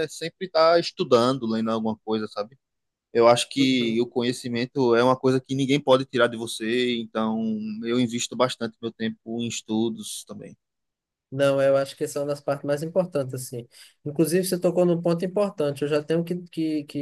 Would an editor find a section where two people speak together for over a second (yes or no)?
no